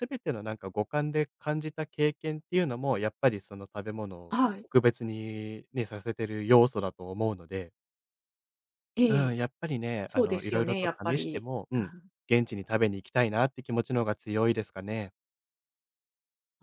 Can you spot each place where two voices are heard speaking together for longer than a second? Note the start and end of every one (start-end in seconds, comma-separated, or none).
10.1-11.9